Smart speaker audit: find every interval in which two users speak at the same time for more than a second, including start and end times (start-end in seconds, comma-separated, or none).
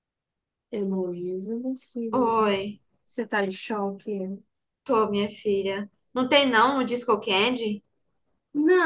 none